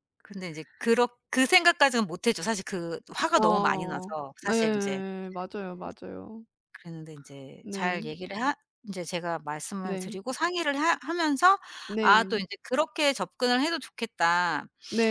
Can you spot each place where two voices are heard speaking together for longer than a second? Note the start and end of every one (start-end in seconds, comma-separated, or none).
3.4-5.0